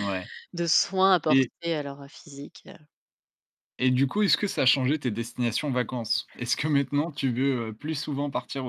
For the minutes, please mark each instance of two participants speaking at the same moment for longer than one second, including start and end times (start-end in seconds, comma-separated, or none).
none